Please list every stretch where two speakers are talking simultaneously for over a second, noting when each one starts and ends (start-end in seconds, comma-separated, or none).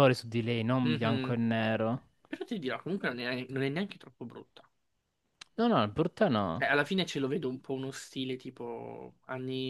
none